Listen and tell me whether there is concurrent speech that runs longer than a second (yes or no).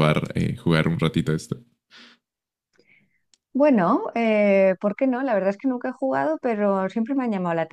no